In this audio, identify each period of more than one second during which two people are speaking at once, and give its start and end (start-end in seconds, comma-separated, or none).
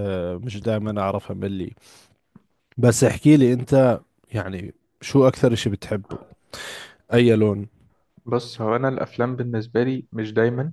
none